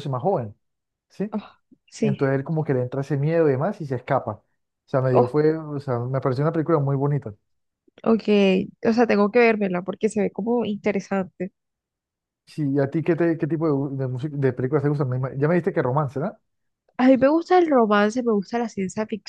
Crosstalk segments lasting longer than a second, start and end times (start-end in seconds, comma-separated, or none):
none